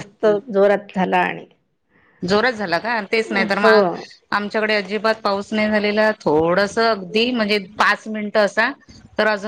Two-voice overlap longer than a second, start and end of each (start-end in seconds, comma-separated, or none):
none